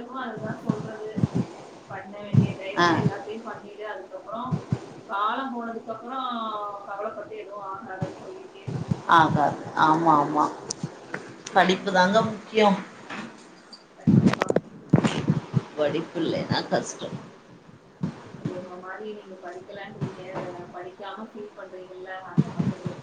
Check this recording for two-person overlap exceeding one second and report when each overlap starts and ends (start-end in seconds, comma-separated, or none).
none